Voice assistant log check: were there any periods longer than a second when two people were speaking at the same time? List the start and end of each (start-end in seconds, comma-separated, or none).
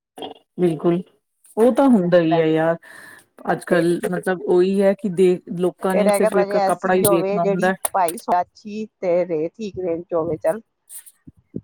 5.9-7.7